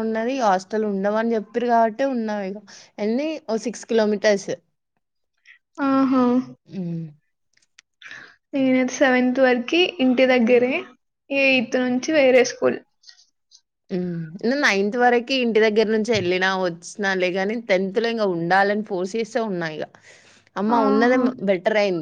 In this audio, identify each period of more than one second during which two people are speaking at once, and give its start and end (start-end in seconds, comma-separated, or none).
none